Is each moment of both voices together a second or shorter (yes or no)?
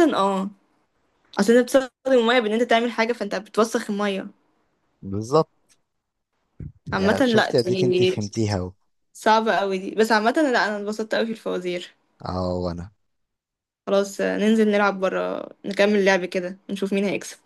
no